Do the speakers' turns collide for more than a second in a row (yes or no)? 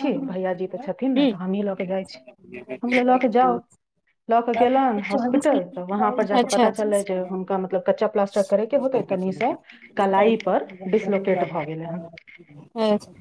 yes